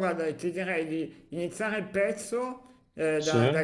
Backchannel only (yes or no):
yes